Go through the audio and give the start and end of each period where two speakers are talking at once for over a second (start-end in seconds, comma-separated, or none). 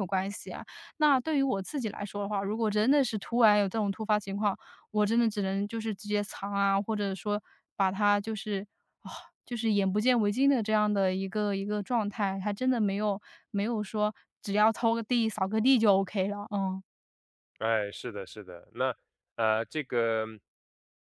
none